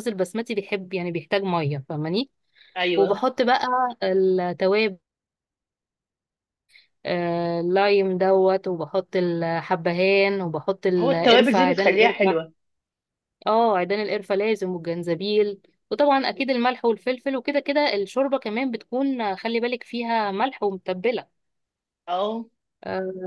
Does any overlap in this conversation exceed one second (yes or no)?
yes